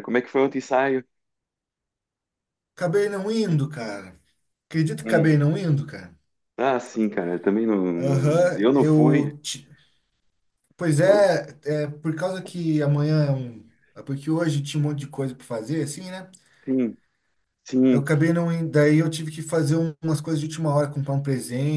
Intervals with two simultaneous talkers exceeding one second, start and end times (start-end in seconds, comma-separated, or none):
8.0-9.3